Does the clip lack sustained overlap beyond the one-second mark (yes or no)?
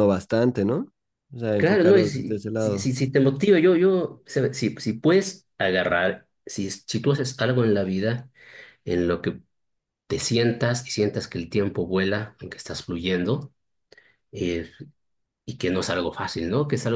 no